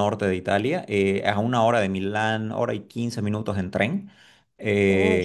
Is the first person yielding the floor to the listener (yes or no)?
no